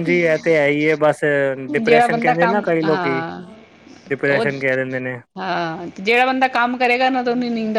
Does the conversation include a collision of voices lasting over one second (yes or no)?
yes